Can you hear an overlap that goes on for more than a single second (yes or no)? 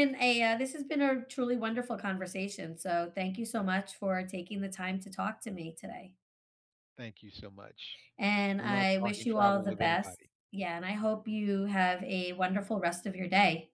yes